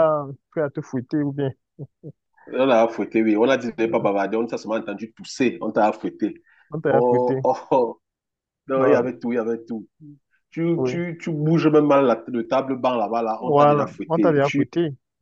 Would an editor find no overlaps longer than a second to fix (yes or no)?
no